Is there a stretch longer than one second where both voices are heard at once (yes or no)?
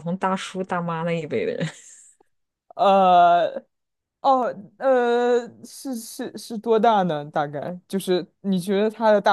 no